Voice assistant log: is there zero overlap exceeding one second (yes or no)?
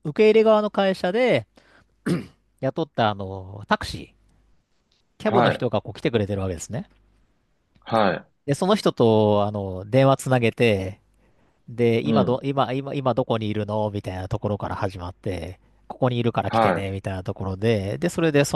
yes